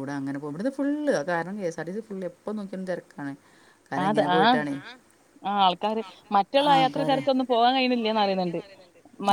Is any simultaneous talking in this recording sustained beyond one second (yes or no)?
no